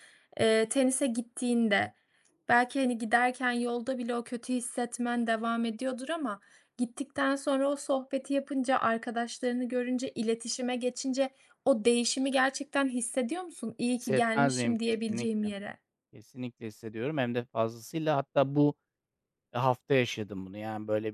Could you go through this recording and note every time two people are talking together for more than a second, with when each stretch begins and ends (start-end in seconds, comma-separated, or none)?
13.9-15.5